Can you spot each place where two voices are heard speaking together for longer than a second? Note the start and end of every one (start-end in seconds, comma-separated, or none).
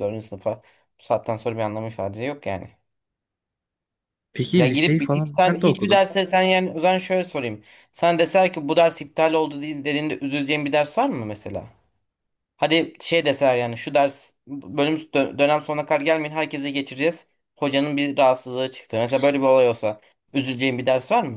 4.6-6.0